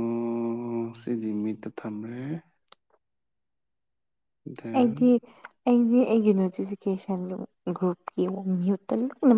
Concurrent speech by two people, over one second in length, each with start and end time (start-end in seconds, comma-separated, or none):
none